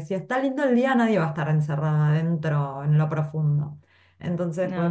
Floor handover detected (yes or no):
no